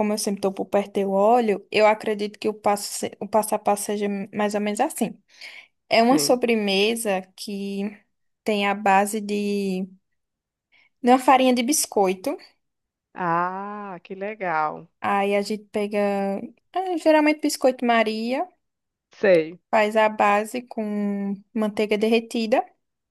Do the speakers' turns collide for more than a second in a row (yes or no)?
no